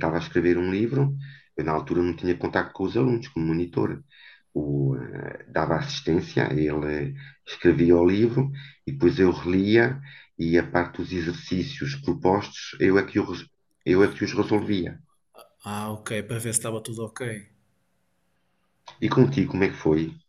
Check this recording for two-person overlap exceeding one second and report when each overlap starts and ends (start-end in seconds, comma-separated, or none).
none